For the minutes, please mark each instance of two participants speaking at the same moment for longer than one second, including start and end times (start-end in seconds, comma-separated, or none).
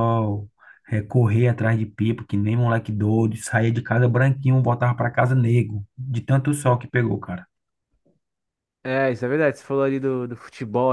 none